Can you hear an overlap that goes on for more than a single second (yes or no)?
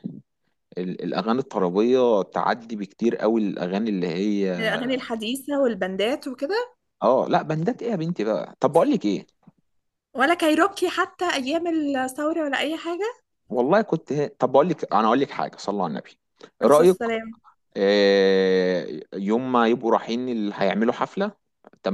no